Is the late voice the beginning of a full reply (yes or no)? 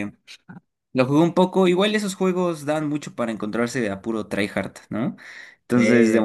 no